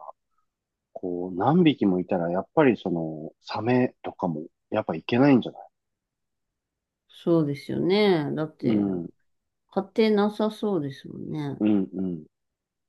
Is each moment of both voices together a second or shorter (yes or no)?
yes